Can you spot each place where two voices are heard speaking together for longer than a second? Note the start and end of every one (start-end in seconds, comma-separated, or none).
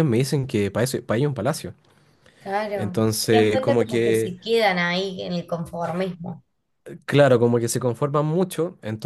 2.7-4.3